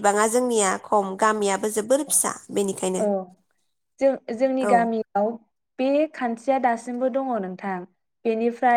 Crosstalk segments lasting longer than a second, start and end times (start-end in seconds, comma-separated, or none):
none